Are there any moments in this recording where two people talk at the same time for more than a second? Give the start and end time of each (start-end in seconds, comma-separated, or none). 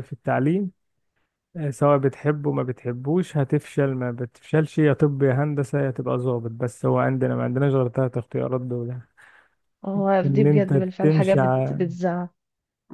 10.2-11.8